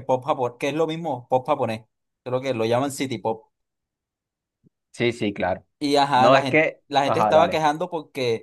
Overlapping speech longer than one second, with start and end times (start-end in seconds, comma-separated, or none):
6.1-7.6